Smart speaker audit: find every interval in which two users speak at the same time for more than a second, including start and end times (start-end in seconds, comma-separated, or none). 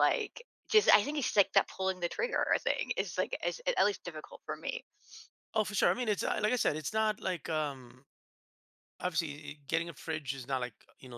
none